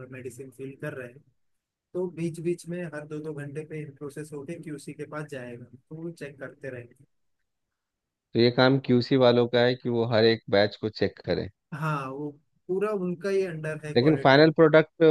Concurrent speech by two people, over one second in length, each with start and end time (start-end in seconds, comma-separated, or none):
none